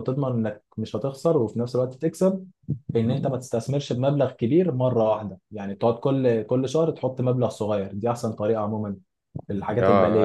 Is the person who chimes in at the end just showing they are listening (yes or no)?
no